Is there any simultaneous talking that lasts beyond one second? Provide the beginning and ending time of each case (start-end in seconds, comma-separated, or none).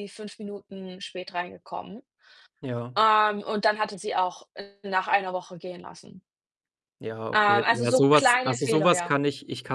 7.3-9.1